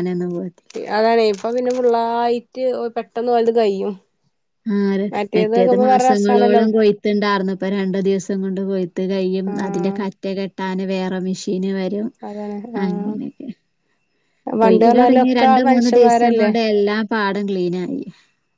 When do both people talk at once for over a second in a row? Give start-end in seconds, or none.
14.6-16.5